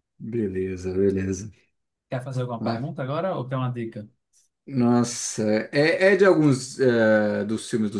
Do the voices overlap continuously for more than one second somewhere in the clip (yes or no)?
no